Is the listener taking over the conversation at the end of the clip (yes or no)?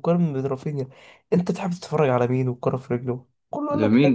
yes